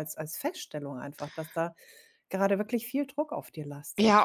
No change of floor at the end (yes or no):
no